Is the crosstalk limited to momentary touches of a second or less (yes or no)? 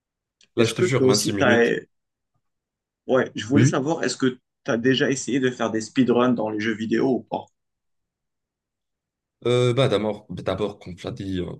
no